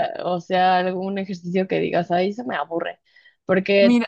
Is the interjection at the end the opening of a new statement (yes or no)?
no